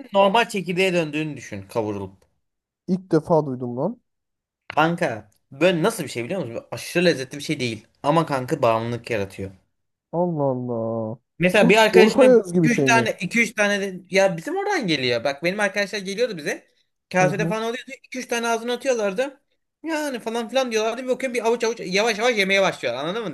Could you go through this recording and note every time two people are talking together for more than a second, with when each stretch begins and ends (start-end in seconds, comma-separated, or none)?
11.4-13.1